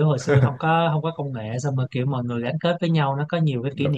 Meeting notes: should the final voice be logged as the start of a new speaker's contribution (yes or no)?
no